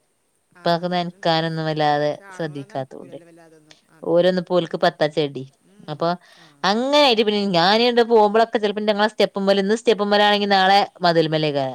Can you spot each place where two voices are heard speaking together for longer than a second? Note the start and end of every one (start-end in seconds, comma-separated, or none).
0.6-3.2